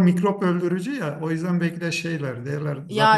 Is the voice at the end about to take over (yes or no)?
yes